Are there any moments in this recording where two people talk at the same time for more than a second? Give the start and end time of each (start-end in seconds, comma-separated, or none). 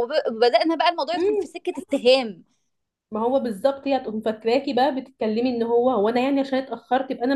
none